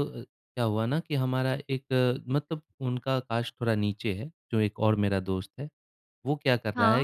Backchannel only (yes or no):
yes